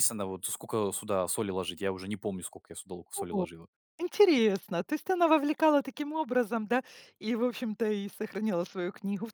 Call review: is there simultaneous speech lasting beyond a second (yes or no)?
no